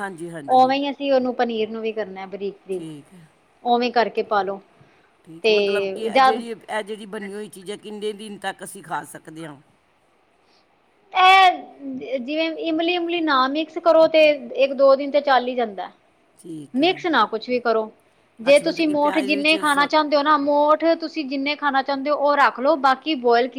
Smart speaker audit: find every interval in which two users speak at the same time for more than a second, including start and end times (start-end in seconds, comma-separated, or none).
18.5-19.9